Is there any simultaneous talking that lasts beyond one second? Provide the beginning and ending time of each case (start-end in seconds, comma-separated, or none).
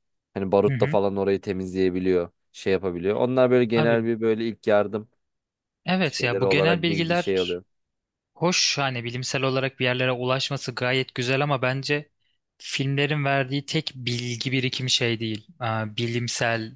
6.0-7.6